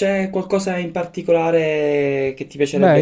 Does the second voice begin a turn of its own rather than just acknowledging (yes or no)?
yes